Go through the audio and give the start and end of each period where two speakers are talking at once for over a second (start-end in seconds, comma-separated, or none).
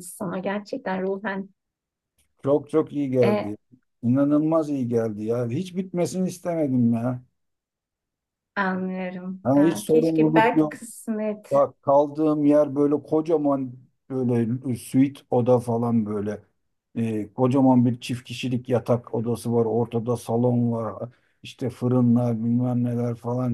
9.4-10.7